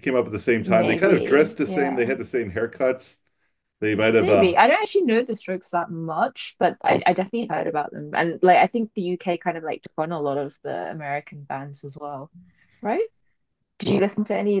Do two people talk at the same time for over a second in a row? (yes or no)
yes